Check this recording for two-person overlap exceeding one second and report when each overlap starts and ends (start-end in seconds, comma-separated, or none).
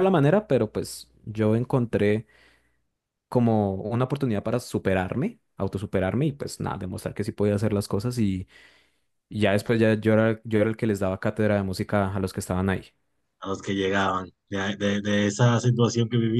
none